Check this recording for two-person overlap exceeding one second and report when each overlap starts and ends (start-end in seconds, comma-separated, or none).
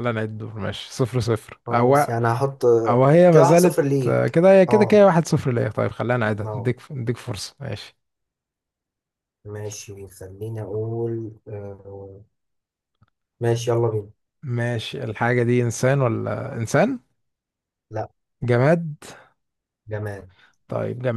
3.3-5.1